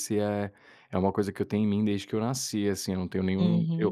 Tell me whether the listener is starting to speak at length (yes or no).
yes